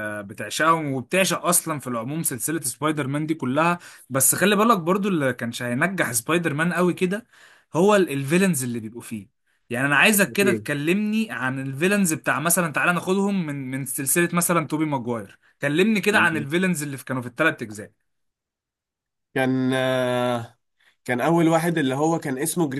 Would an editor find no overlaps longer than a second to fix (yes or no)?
yes